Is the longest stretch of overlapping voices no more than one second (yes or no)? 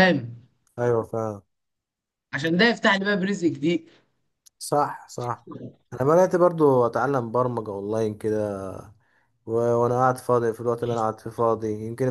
yes